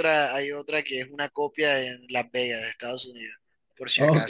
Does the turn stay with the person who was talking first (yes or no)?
no